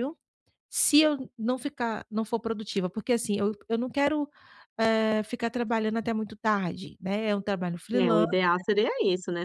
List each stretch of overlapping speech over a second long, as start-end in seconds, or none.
none